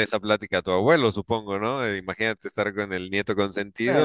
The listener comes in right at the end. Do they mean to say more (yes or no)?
yes